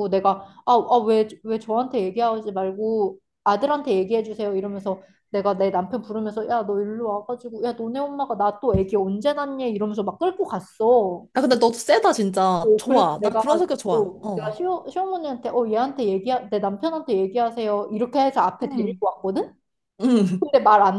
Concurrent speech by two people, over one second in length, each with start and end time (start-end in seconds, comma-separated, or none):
12.9-14.6